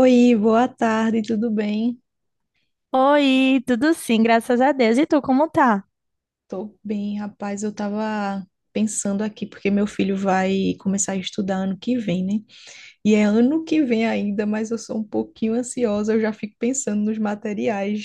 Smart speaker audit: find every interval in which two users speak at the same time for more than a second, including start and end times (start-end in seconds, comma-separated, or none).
none